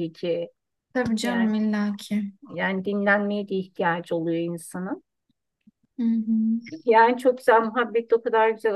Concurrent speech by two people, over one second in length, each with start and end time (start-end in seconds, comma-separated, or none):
none